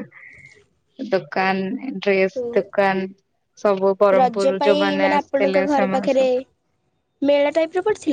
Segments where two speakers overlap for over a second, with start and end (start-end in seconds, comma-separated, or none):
4.2-6.2